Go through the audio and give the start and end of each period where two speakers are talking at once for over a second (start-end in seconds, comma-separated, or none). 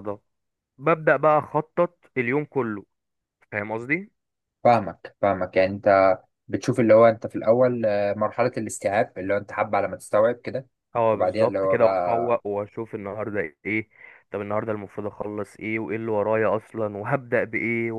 11.1-12.4